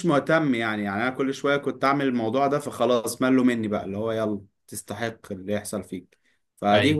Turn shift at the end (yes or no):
no